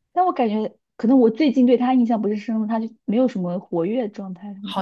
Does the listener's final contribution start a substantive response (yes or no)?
yes